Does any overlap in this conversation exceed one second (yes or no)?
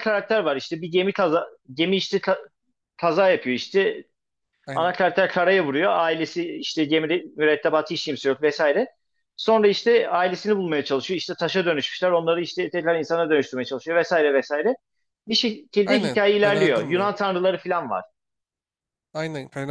yes